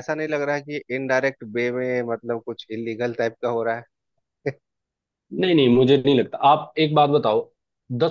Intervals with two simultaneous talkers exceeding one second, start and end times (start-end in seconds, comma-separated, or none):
none